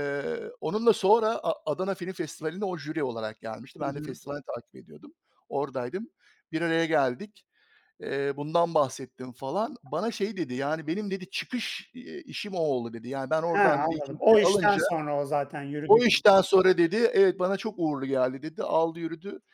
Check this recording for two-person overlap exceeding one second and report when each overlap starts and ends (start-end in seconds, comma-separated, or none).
13.5-14.8